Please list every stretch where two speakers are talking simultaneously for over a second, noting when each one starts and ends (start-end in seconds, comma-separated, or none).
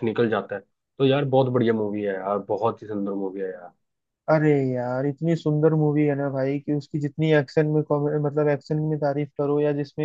none